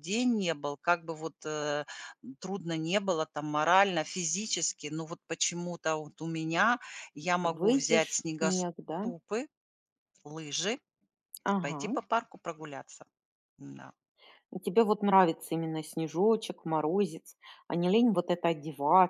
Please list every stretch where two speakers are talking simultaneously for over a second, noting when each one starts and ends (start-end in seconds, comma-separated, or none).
7.5-9.1